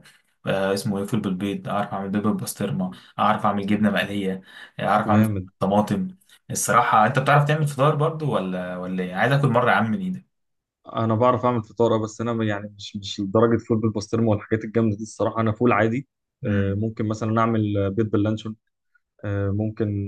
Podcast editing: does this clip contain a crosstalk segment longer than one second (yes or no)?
no